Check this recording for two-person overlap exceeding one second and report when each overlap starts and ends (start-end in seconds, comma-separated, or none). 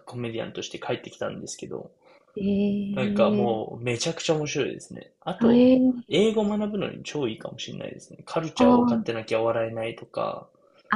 none